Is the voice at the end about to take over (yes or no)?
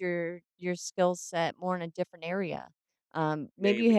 no